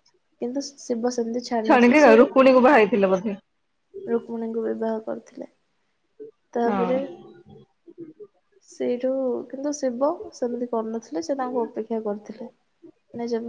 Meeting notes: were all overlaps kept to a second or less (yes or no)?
yes